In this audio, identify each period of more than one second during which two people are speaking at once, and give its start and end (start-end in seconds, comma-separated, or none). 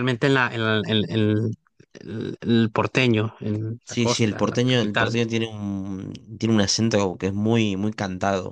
3.8-5.2